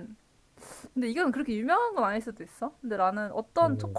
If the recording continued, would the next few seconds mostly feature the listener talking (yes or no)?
no